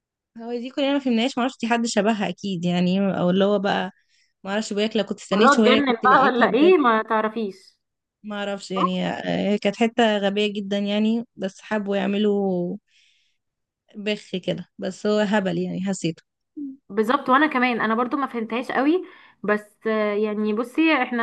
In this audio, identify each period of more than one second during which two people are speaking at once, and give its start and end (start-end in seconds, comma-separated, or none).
5.3-6.7